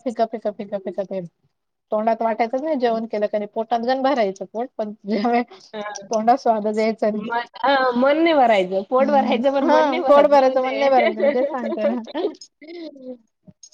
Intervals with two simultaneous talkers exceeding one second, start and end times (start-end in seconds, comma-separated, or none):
9.0-10.6